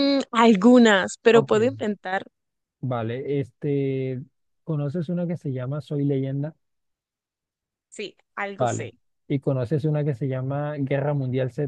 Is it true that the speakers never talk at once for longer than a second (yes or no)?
yes